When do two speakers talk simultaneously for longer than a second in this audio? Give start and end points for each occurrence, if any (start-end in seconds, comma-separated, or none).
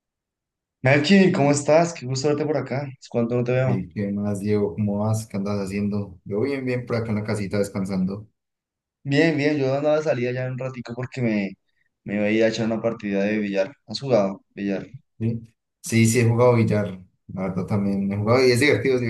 none